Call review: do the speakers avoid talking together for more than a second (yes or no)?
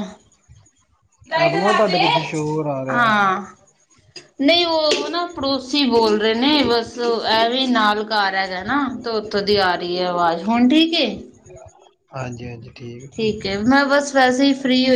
yes